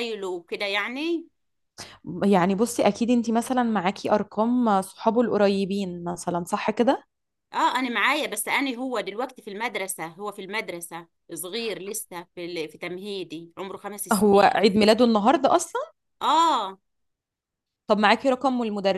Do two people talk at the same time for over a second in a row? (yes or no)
no